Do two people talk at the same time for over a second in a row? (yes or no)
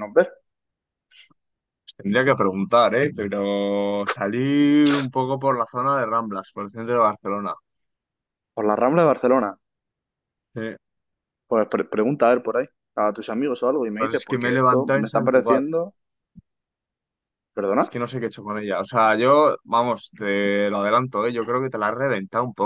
yes